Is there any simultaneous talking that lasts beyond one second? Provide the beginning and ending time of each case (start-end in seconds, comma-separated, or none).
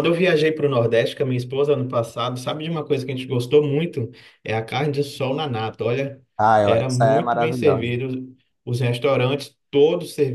6.6-7.9